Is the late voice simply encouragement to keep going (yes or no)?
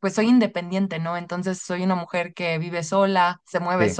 yes